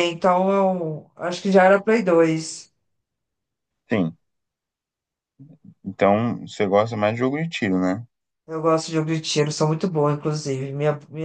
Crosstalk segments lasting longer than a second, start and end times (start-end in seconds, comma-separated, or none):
none